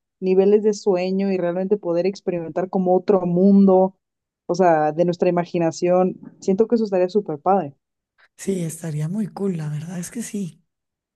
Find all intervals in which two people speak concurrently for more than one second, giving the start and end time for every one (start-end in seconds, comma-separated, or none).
none